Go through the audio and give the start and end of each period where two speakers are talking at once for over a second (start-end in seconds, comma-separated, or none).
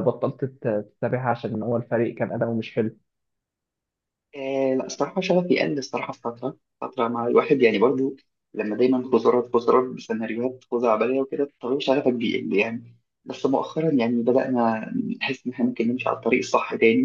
none